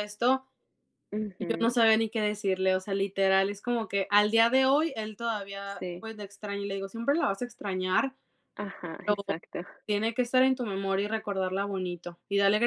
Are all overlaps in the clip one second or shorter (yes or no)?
yes